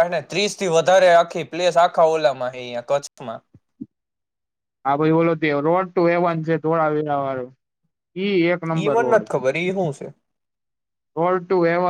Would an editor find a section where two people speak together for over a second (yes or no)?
no